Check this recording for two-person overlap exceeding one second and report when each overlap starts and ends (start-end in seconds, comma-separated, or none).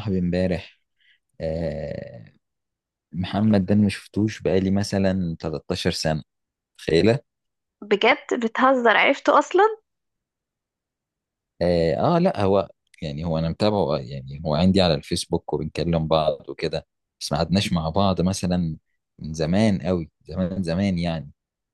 none